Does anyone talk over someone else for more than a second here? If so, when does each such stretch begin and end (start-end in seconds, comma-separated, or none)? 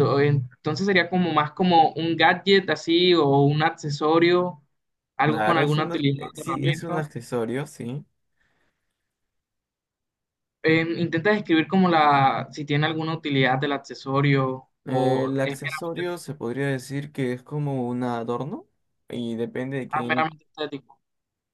5.2-7.1, 14.8-16.1